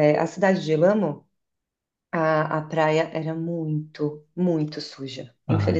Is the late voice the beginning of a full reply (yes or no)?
yes